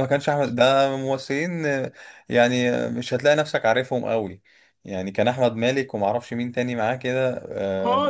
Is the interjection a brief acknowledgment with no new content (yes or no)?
no